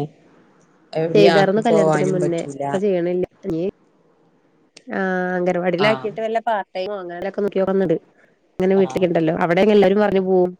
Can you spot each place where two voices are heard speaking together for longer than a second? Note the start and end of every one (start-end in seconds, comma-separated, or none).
1.1-2.7